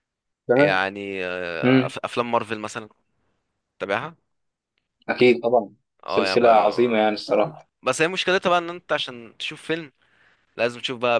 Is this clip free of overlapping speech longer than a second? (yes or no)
yes